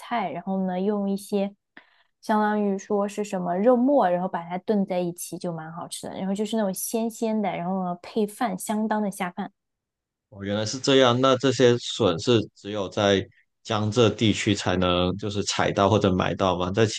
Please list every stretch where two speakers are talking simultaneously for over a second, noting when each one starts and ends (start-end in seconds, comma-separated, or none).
none